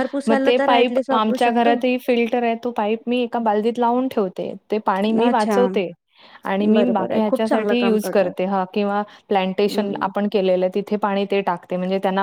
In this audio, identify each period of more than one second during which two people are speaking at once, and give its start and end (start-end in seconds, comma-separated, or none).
6.7-8.3